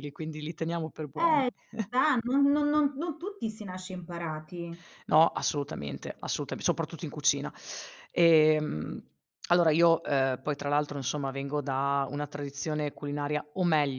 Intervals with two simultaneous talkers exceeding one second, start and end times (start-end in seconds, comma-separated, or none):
none